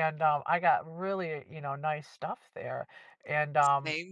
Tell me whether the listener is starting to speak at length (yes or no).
no